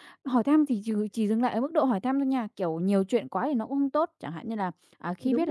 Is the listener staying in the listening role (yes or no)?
yes